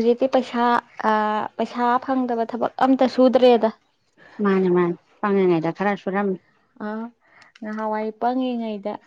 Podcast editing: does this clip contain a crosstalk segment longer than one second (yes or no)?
no